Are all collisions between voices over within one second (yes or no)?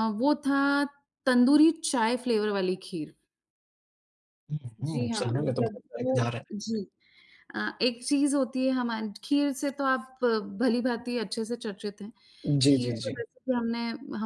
no